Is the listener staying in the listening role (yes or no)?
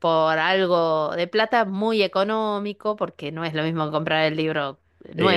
no